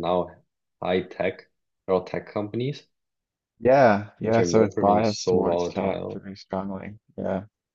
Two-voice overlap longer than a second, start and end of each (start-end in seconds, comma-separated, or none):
4.2-6.2